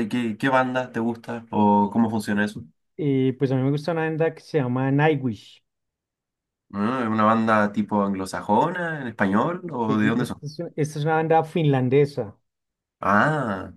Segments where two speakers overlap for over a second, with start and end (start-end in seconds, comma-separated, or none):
none